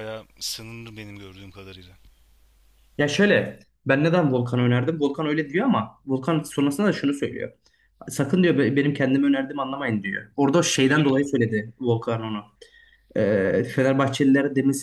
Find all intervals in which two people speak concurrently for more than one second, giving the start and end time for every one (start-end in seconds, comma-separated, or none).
none